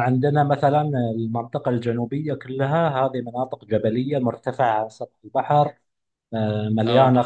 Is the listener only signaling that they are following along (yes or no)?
yes